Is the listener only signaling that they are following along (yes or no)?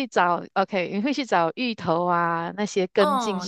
no